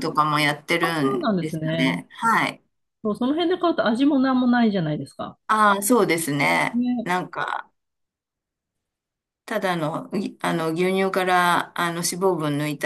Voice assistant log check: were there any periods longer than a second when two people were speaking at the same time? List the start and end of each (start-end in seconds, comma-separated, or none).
0.8-2.0